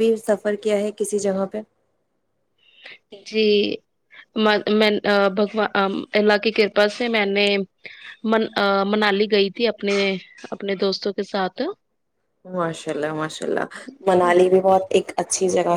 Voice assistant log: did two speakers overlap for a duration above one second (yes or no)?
no